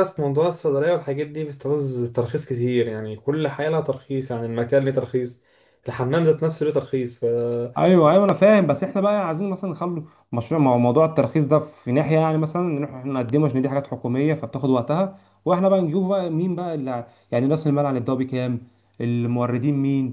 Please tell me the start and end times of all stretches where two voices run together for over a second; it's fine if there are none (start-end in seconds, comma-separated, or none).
none